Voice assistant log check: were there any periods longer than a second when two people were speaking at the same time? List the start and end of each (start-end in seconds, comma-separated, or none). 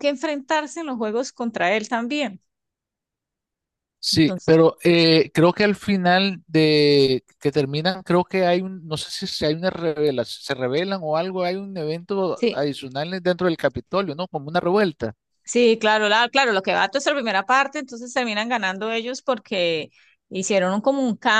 none